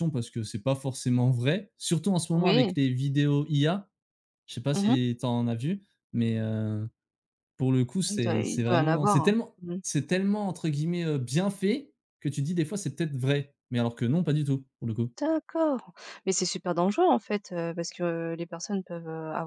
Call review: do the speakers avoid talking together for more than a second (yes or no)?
no